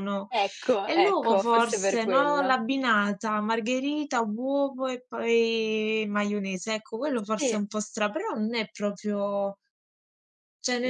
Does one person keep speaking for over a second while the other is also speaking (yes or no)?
yes